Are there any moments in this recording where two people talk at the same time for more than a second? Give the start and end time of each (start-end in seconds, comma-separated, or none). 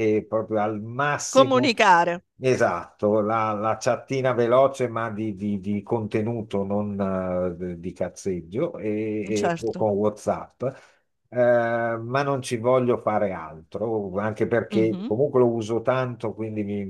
none